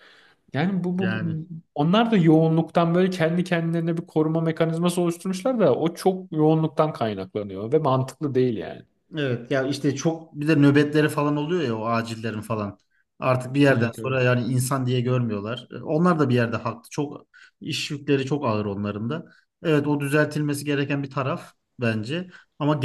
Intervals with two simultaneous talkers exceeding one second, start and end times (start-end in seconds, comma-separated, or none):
none